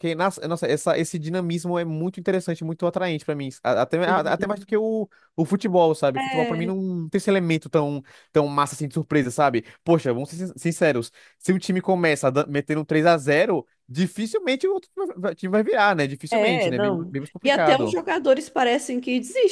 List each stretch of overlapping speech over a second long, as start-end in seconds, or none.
16.3-18.0